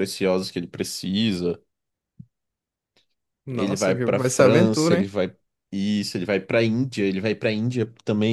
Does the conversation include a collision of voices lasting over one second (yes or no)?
yes